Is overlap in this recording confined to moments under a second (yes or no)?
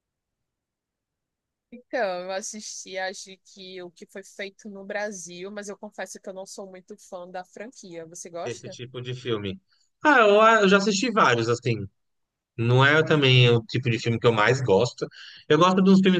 yes